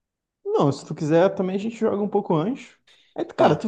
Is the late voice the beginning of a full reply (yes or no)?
no